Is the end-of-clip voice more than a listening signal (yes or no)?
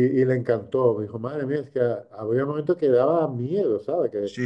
yes